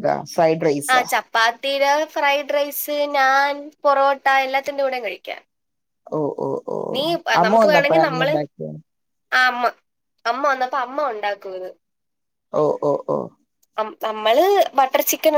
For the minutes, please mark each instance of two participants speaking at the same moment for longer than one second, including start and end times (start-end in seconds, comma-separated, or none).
none